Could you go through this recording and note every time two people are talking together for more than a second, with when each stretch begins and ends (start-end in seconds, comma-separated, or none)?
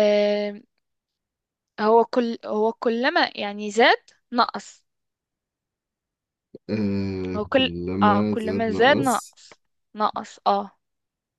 7.3-9.4